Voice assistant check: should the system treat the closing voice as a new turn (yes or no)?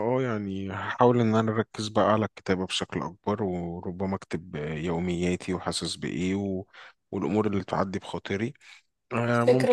no